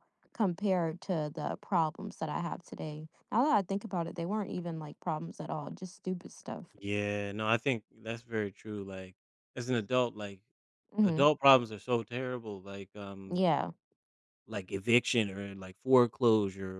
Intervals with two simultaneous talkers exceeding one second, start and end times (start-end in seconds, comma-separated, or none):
none